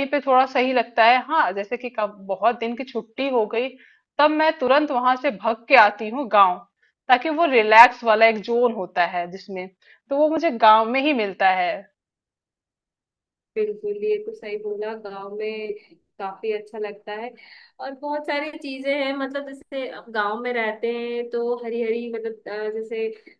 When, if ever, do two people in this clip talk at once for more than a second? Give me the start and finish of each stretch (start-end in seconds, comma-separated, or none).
none